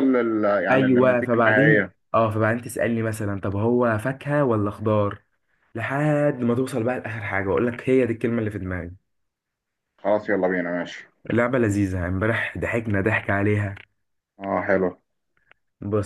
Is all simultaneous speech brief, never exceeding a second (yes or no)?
no